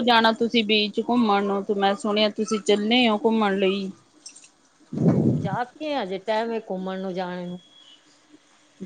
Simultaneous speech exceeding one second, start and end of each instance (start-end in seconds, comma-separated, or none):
none